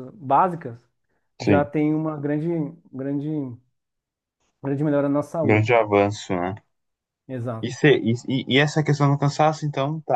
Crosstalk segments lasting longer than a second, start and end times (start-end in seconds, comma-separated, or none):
none